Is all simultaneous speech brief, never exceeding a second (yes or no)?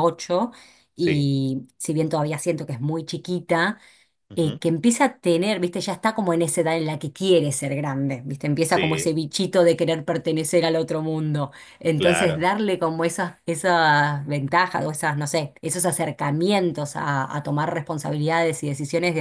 yes